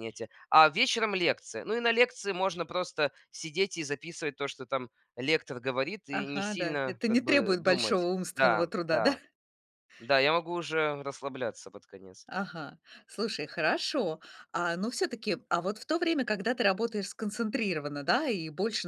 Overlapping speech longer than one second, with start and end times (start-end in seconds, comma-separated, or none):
6.1-9.2